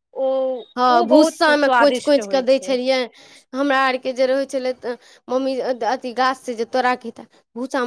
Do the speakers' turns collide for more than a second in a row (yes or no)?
yes